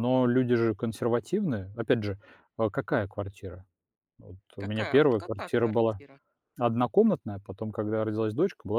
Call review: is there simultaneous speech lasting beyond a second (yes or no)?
yes